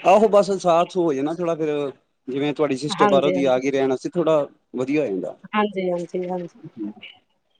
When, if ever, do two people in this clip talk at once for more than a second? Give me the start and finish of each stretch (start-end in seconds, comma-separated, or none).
none